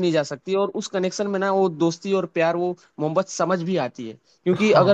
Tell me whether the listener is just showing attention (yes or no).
yes